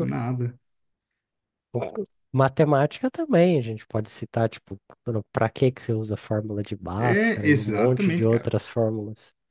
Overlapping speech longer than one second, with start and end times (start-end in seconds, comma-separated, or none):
7.0-8.5